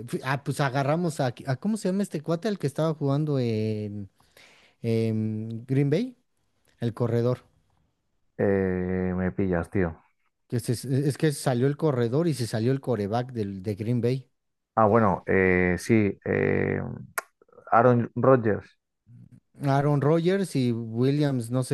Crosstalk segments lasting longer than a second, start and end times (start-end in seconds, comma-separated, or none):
none